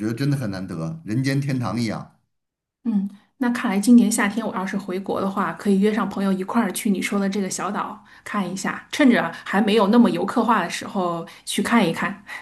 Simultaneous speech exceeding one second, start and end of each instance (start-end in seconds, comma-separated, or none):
none